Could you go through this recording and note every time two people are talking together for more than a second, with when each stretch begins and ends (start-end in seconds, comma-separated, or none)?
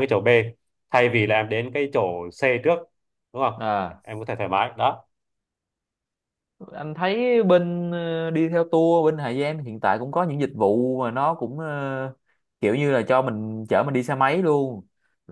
none